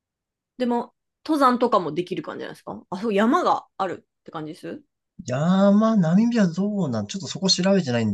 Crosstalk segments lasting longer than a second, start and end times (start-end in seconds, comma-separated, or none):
none